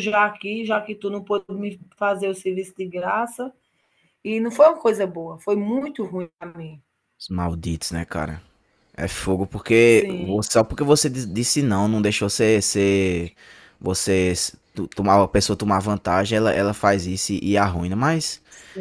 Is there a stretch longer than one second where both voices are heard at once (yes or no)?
no